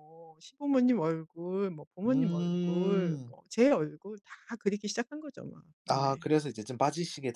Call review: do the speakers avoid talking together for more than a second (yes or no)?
no